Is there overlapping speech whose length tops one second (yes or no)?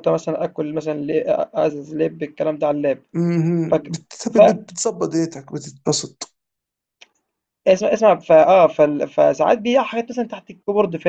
no